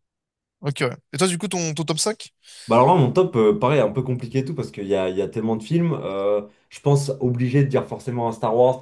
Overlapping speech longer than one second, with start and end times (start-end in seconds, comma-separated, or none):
none